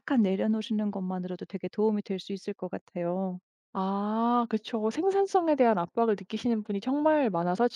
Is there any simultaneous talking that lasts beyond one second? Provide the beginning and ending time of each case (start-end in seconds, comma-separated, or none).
none